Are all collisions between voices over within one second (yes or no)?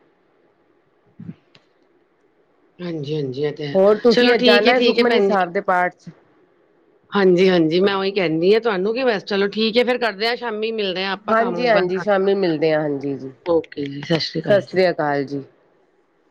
no